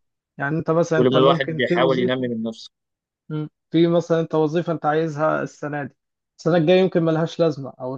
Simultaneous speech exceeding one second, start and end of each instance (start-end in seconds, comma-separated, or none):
1.0-2.3